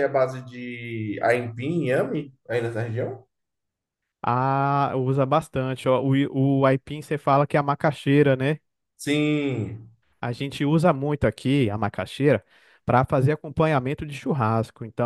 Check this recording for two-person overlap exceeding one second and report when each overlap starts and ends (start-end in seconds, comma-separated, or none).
none